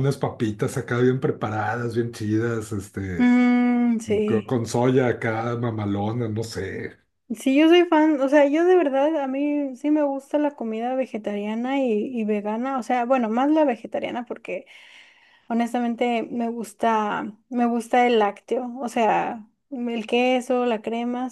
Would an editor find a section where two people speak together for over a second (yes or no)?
no